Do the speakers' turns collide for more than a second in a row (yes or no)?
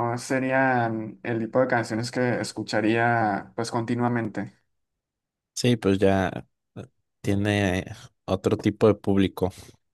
no